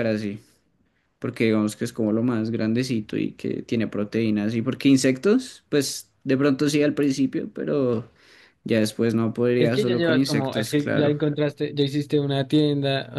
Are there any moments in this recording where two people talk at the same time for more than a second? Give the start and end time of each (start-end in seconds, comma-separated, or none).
9.6-11.2